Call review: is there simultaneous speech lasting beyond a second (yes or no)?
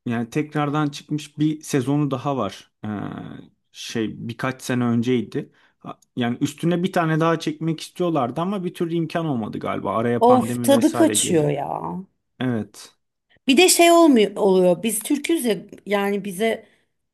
yes